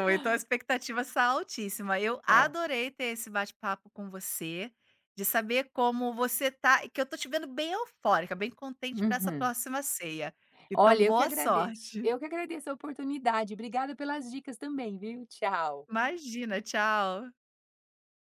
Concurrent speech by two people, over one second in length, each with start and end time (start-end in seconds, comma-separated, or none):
10.7-12.1